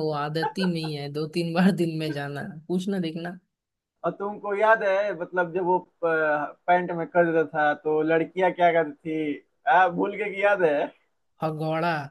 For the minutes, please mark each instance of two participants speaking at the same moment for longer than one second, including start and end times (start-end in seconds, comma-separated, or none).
none